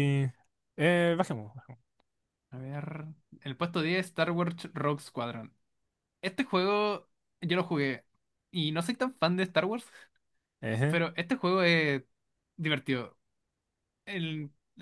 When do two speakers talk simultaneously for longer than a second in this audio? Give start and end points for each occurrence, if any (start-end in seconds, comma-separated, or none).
none